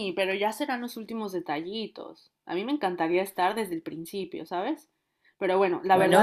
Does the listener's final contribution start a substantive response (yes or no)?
no